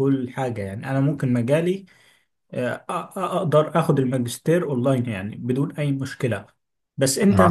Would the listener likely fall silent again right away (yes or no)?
yes